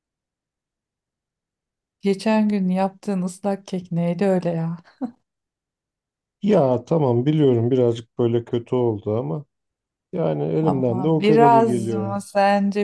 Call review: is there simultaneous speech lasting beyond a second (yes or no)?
yes